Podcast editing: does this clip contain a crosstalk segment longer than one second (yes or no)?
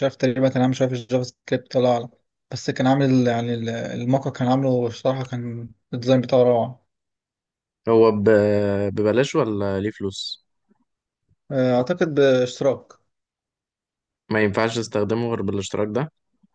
no